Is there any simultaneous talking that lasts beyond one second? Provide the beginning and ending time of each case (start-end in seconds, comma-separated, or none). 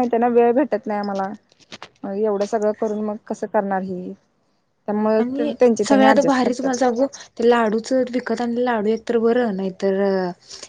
5.2-6.8